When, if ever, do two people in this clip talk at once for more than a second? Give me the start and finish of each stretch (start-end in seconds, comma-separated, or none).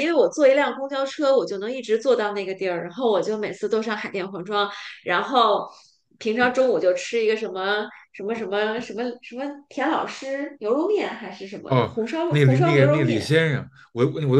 11.7-13.3